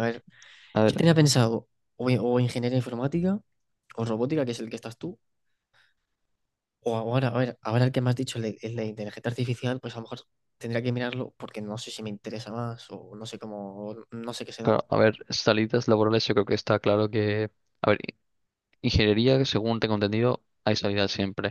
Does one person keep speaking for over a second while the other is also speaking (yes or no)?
no